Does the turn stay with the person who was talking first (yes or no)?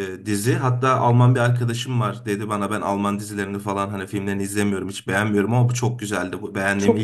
no